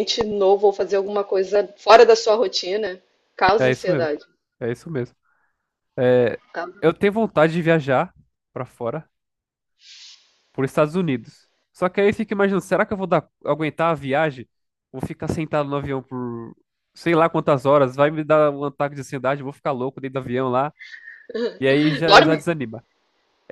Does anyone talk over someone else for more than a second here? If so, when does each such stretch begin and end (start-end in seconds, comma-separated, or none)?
none